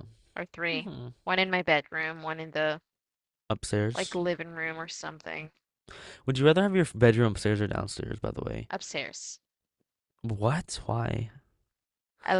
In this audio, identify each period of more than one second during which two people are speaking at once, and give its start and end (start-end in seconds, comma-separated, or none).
none